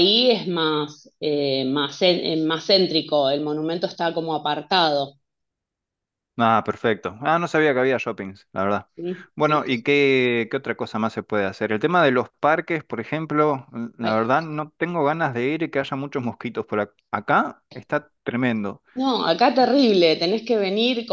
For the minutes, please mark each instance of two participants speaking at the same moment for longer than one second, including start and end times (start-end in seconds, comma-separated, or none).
none